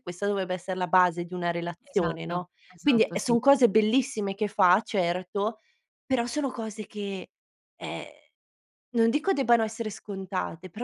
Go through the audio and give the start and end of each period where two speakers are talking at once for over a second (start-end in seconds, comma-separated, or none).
1.8-3.4